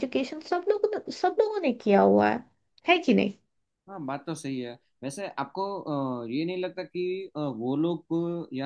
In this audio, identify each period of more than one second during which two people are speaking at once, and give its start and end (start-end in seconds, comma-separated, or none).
none